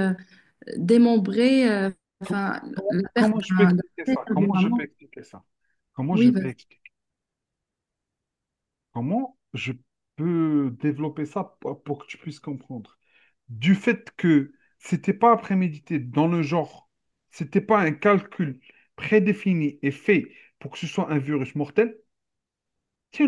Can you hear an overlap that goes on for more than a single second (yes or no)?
yes